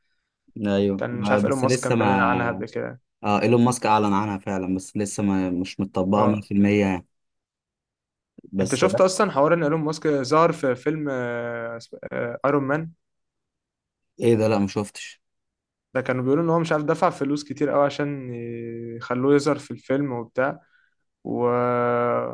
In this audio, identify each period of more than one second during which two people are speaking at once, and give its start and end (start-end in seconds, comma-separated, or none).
1.0-2.6